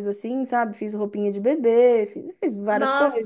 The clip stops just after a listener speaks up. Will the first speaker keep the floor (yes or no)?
no